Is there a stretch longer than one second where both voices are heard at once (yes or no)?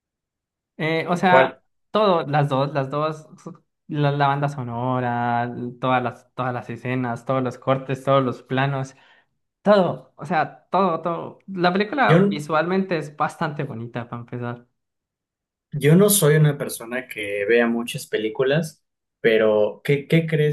no